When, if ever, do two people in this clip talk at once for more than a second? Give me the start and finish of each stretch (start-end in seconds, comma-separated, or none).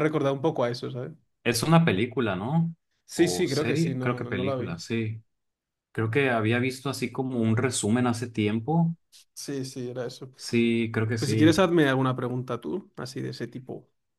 3.1-4.8